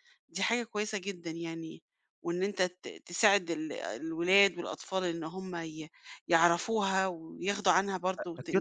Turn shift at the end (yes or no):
yes